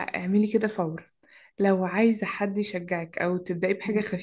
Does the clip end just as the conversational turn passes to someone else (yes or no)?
no